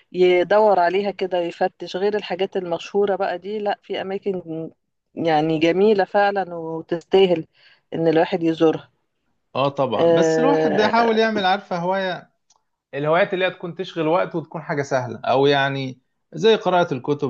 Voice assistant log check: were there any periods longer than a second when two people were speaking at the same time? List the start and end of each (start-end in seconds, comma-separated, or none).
10.0-11.2